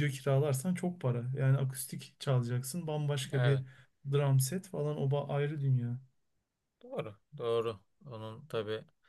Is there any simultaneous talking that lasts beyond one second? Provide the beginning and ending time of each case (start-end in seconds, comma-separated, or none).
none